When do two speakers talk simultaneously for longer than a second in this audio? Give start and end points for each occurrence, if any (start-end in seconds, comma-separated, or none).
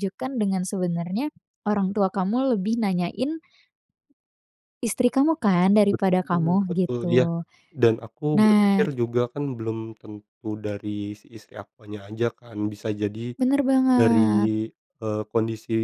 5.9-7.2